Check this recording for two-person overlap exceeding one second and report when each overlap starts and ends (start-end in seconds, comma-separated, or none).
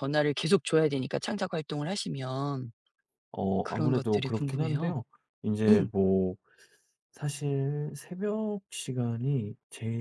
3.6-5.0